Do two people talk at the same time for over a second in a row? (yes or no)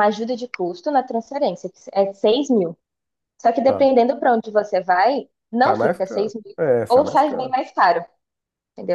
yes